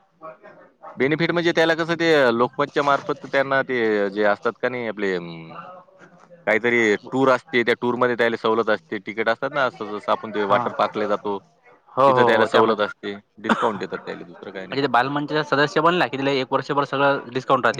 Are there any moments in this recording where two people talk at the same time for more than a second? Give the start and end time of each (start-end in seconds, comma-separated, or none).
12.1-13.8